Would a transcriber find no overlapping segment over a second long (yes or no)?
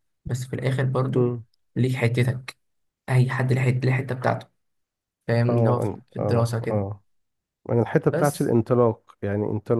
no